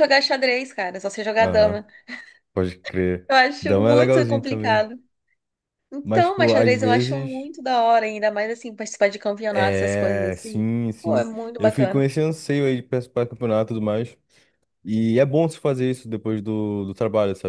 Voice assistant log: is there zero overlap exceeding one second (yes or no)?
no